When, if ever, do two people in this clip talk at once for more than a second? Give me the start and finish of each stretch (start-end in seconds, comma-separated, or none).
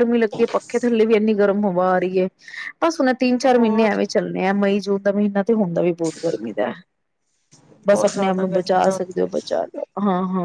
7.9-9.3